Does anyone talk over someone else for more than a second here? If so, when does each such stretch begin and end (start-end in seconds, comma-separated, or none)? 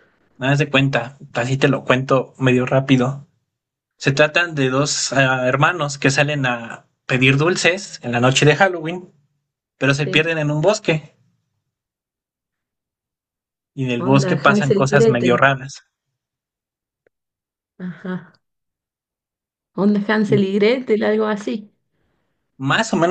14.0-15.4